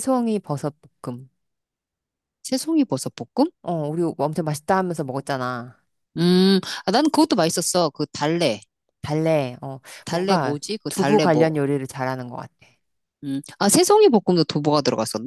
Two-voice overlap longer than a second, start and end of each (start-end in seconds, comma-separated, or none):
10.1-11.5